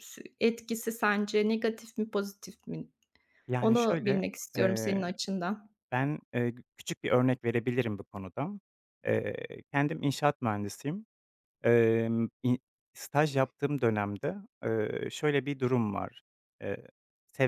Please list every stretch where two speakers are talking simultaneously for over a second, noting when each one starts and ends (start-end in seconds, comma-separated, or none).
3.6-5.0